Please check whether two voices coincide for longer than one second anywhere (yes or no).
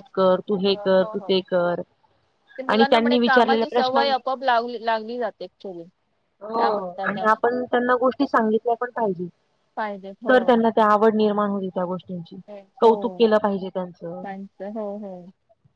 yes